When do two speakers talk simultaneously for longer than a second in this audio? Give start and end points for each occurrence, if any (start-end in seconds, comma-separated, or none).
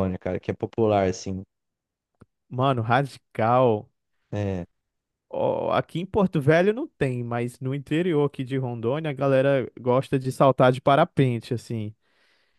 none